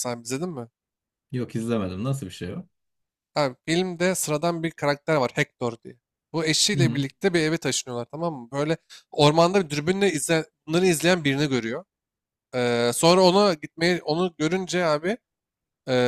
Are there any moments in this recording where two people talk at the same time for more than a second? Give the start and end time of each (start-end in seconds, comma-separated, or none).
none